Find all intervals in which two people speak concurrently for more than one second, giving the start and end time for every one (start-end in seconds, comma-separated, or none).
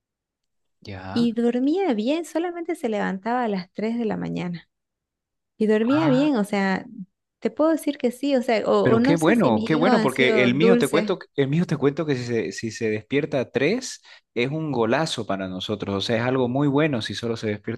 8.8-11.2